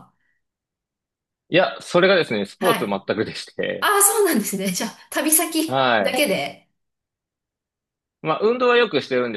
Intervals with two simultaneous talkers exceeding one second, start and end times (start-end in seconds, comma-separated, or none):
none